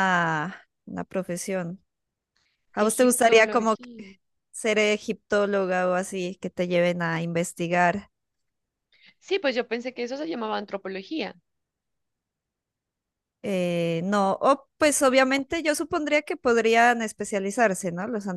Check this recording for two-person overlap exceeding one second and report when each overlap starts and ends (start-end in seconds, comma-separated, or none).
2.8-4.0